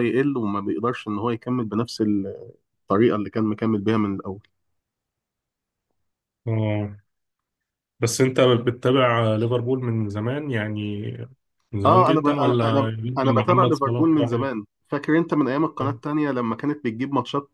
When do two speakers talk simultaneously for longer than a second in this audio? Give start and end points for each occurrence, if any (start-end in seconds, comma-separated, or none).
11.9-14.5